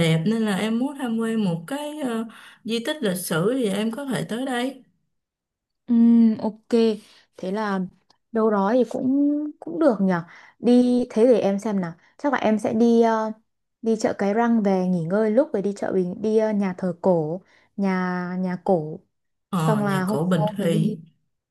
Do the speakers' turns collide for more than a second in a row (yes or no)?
yes